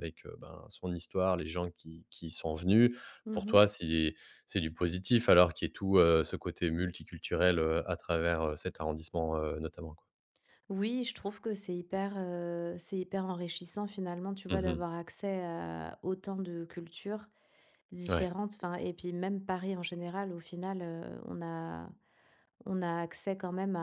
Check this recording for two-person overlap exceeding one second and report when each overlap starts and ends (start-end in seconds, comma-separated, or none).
none